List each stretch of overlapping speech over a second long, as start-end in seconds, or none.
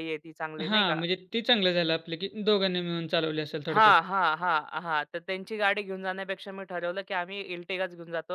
none